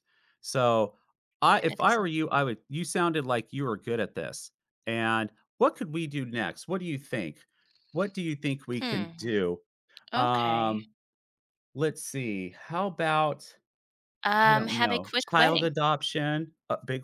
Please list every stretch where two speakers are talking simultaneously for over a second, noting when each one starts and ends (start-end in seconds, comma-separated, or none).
14.3-15.7